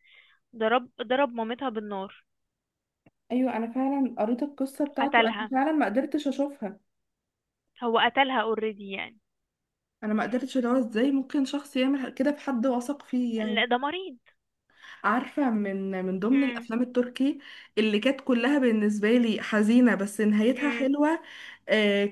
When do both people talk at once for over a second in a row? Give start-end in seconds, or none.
none